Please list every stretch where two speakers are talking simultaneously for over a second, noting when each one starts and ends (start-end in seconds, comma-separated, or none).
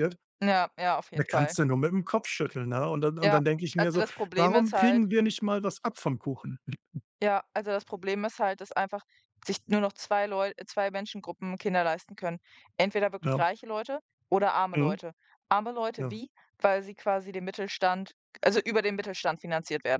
3.2-5.0